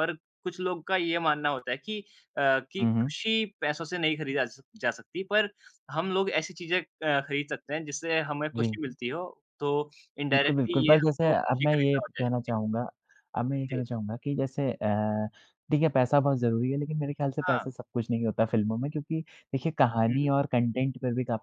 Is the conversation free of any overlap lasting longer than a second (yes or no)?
no